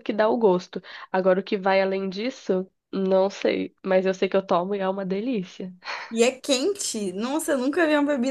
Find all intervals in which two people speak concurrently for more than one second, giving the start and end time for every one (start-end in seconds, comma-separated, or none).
none